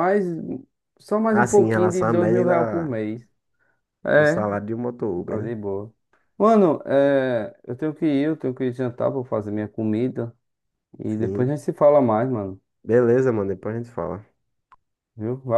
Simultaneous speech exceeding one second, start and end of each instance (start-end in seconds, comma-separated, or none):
1.3-3.0